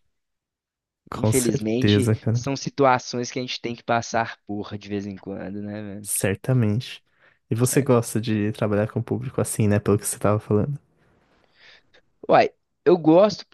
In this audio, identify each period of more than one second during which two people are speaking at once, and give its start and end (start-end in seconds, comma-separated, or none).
1.1-2.4